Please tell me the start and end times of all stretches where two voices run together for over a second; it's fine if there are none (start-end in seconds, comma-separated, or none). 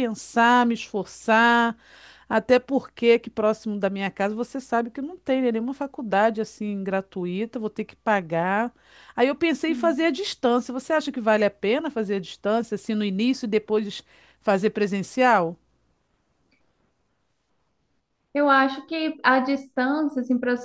none